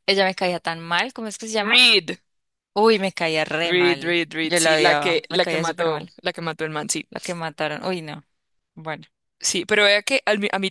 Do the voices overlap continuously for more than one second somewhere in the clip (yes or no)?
yes